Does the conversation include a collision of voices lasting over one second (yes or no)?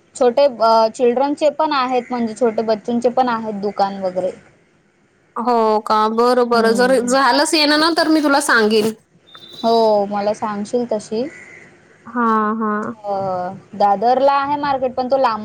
no